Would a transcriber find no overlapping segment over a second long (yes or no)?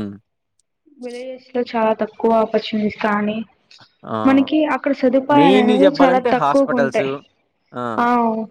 no